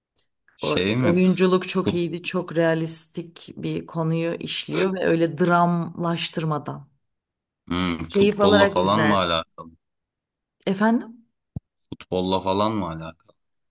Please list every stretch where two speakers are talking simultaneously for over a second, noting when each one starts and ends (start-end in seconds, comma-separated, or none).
8.1-9.4